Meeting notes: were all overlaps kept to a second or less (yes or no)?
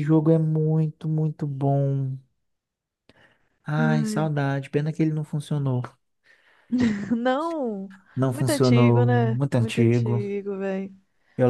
no